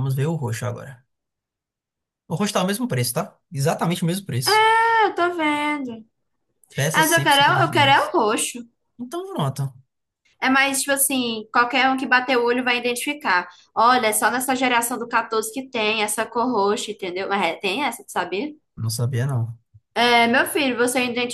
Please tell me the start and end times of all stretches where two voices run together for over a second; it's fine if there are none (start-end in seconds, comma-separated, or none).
6.9-8.1